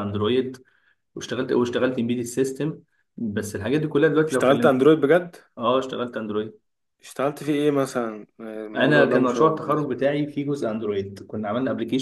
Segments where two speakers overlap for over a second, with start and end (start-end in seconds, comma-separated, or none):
8.8-9.9